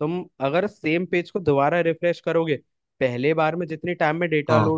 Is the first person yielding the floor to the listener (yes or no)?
no